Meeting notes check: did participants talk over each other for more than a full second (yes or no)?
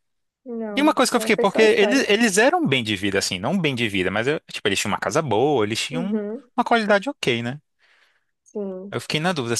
yes